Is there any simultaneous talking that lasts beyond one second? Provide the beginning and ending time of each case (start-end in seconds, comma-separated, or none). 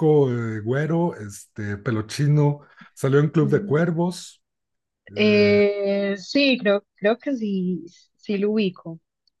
none